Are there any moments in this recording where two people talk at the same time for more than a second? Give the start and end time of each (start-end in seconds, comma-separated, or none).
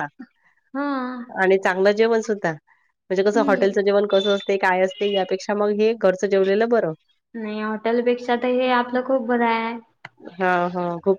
none